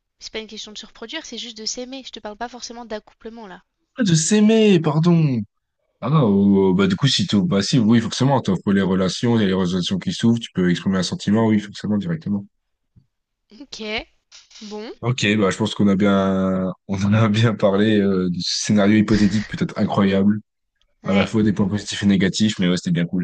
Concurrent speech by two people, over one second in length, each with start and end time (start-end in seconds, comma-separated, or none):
none